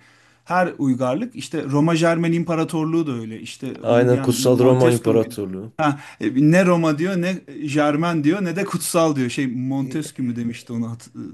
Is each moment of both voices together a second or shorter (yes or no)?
no